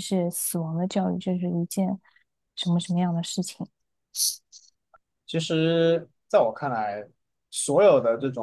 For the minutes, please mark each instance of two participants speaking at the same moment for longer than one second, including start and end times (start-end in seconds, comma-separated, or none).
none